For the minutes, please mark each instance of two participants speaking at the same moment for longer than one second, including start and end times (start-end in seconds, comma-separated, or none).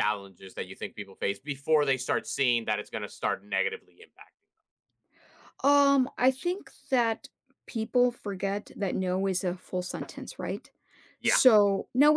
none